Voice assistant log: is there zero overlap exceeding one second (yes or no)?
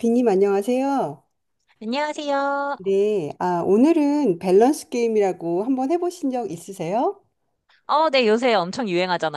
yes